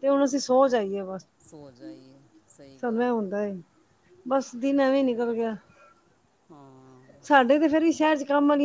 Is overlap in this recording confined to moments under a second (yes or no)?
yes